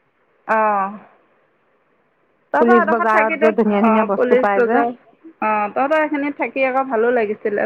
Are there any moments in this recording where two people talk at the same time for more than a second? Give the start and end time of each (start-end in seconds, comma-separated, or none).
2.6-4.8